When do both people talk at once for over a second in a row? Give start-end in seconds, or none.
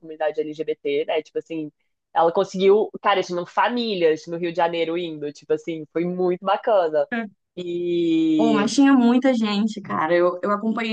none